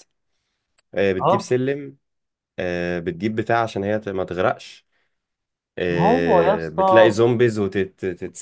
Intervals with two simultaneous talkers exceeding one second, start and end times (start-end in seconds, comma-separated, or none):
5.9-7.2